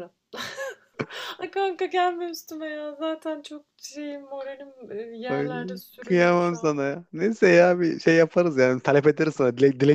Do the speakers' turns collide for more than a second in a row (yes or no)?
yes